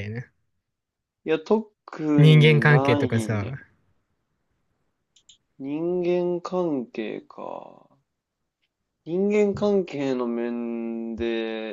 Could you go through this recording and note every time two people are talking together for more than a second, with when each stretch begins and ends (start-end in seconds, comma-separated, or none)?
2.2-3.5